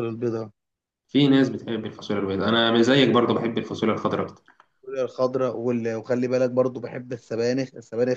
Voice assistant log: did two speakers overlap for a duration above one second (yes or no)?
no